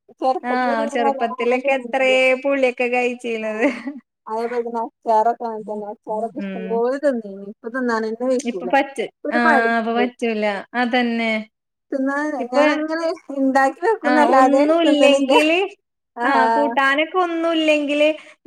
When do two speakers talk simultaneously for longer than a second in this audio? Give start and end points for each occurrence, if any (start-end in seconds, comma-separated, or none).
0.5-2.1